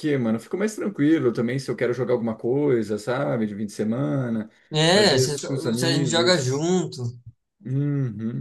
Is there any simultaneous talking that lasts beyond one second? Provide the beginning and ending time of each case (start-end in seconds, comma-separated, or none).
4.9-6.7